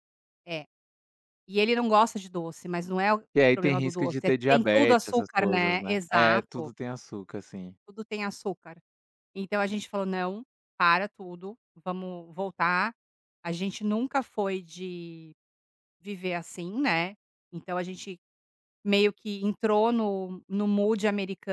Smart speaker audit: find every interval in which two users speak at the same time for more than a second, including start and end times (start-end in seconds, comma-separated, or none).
3.3-6.7